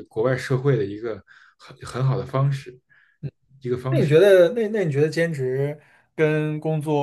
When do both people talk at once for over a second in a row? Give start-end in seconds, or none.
none